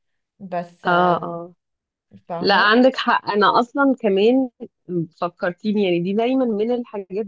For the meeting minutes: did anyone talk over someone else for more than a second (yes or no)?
no